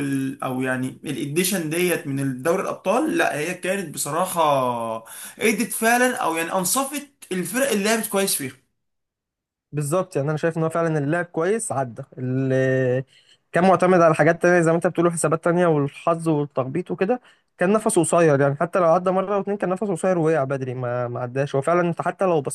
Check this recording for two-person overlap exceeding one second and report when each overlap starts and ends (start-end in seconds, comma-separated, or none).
none